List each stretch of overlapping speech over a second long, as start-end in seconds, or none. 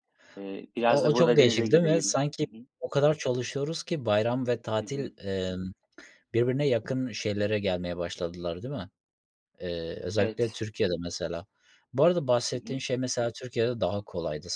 0.9-2.6